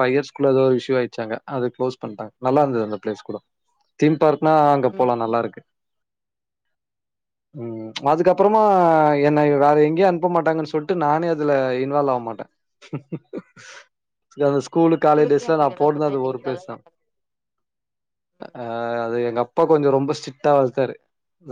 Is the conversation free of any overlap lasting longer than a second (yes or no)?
no